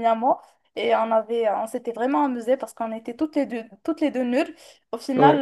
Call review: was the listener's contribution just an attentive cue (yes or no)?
yes